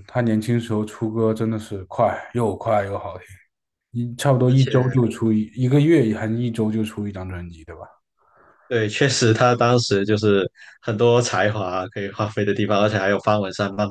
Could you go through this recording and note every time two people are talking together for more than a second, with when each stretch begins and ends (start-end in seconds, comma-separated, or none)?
none